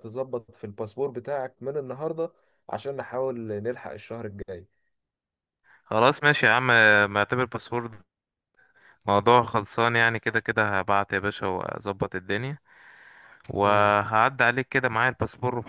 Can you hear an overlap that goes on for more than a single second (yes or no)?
no